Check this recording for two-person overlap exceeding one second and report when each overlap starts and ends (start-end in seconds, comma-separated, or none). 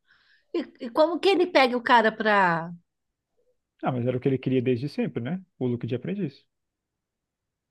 none